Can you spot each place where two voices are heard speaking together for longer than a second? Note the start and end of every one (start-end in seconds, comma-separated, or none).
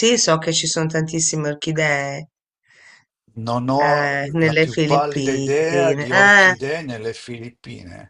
3.8-6.5